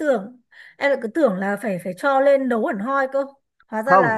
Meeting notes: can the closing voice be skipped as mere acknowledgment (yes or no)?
no